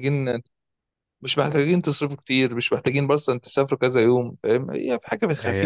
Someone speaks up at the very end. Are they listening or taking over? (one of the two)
taking over